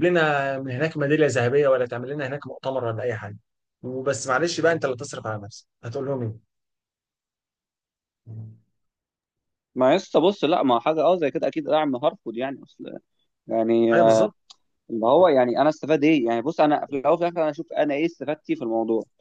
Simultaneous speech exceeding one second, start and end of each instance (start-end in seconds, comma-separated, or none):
none